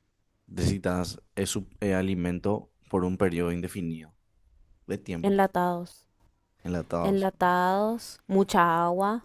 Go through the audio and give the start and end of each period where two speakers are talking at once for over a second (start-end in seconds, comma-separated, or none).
none